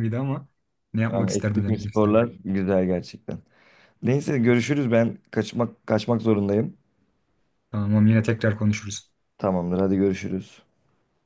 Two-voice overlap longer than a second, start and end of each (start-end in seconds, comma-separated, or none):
1.1-2.3